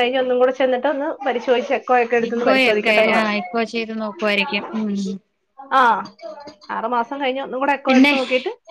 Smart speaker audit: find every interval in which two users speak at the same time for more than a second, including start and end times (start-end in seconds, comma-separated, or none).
none